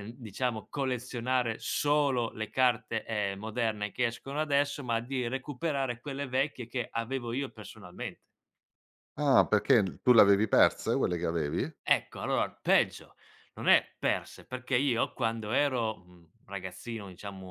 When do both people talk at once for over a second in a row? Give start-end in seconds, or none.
none